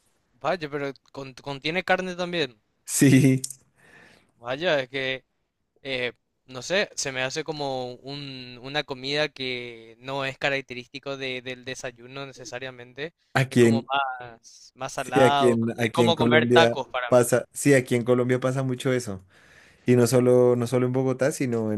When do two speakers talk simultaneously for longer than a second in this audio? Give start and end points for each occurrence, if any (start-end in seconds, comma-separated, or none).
14.9-17.2